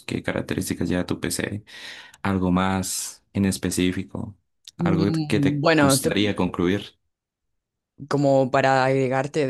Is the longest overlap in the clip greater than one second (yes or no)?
yes